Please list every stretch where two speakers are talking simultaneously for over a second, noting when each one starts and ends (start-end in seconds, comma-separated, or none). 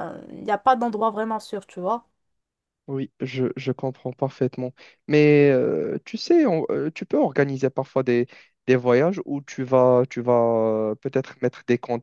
none